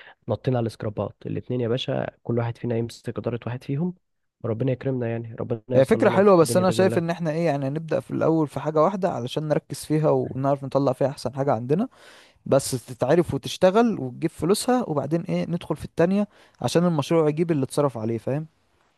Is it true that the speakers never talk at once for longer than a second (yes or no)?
no